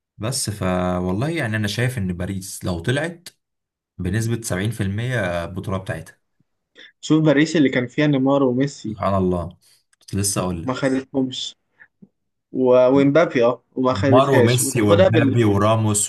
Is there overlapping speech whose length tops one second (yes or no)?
yes